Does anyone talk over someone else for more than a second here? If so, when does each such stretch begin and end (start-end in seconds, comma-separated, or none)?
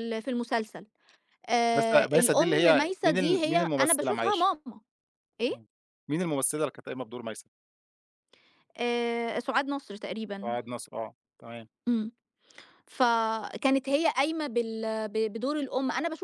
1.7-4.5